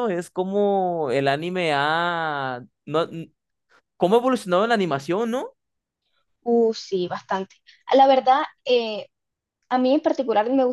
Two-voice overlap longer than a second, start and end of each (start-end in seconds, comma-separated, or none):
none